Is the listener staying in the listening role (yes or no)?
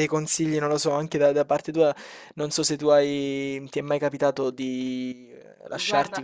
yes